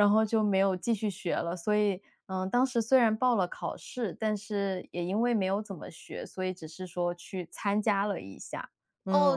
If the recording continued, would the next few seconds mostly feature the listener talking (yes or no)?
yes